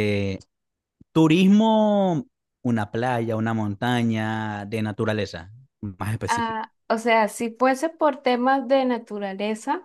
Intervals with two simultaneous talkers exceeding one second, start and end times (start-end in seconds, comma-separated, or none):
none